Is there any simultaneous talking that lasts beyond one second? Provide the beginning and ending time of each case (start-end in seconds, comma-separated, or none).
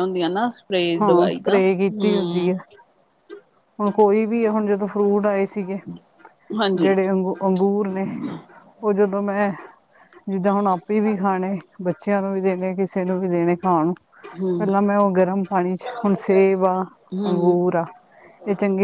1.0-2.6